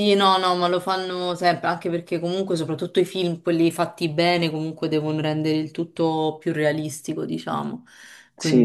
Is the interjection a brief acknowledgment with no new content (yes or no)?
yes